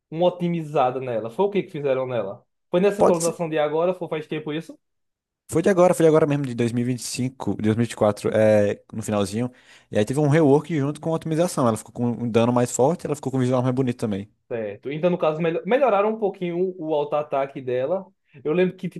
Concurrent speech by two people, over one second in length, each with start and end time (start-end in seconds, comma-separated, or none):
none